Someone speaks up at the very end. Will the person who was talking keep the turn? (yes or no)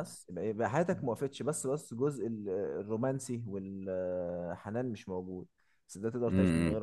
yes